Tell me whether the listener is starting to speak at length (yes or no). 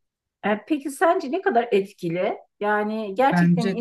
no